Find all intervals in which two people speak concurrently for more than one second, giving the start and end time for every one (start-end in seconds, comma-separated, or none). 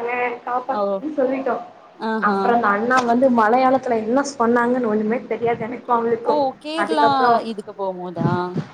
none